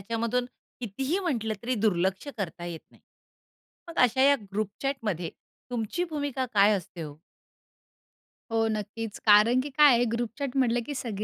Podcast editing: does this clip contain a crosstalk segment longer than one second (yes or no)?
no